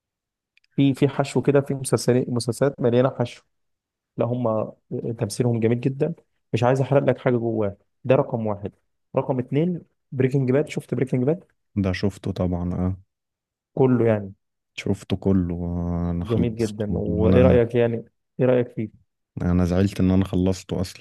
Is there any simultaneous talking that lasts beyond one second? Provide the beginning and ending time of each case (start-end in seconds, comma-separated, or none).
16.2-17.6